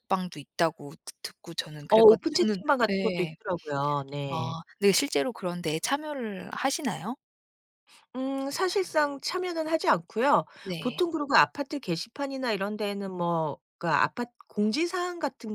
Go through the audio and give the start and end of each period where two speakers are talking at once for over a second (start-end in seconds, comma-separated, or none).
1.9-3.4